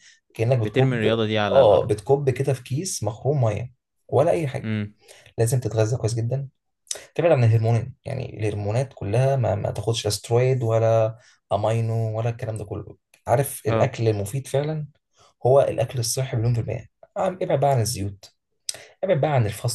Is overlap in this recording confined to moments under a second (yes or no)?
no